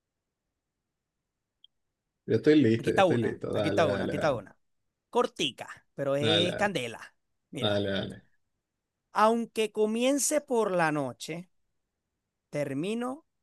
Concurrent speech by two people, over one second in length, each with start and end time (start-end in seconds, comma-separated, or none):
2.8-4.5